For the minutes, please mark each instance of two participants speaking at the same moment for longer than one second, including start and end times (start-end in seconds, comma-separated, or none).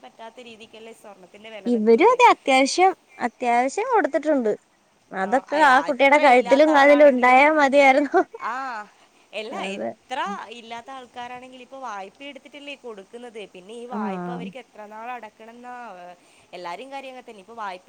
5.3-7.4